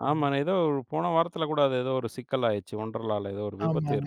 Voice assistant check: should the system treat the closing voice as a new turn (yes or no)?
yes